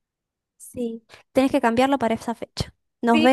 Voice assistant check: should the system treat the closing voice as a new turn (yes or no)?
yes